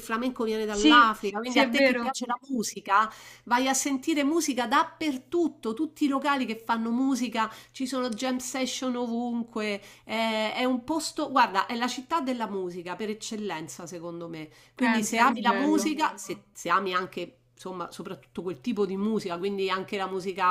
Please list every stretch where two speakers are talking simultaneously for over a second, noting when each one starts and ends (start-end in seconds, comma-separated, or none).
0.7-2.1, 14.7-16.0